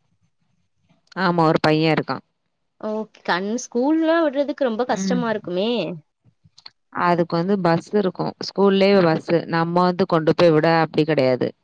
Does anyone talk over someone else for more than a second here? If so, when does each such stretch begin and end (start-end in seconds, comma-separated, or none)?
none